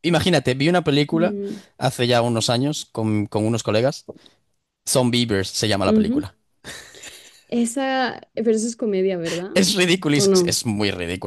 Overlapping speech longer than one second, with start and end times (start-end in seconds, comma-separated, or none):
none